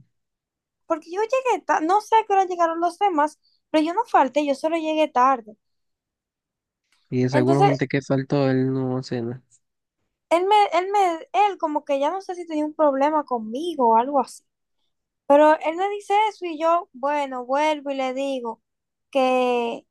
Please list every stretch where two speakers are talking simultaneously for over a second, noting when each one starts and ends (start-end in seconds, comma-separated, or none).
none